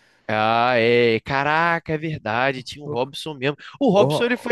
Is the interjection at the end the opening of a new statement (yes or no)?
no